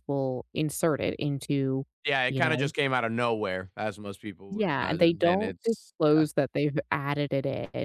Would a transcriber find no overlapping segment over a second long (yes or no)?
no